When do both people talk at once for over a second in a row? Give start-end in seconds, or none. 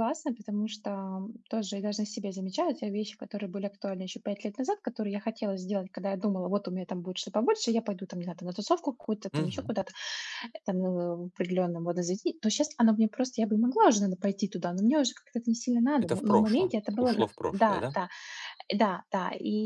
16.0-17.9